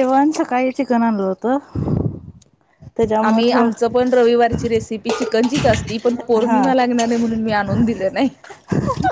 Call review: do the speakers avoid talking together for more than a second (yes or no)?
yes